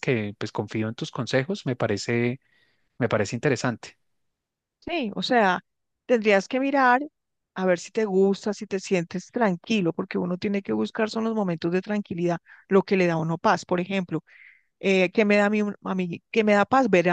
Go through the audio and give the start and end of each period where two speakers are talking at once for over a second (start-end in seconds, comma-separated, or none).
none